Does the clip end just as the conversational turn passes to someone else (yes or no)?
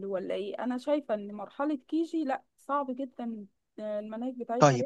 yes